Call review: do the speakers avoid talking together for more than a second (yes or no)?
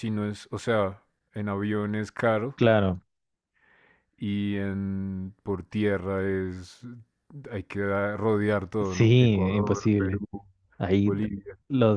no